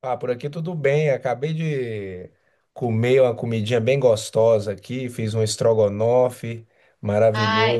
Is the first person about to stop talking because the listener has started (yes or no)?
no